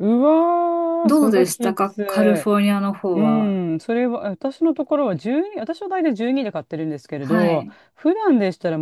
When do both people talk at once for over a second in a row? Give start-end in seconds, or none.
1.1-2.5